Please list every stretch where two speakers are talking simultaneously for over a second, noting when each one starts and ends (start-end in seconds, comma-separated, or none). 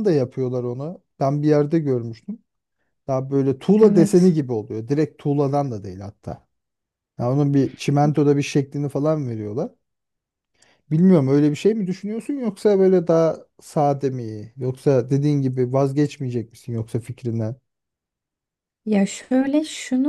none